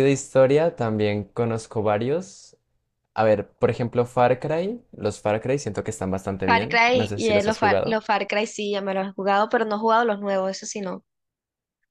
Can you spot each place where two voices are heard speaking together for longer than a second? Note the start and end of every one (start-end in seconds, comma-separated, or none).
6.5-8.0